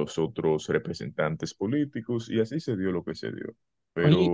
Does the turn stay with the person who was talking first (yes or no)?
yes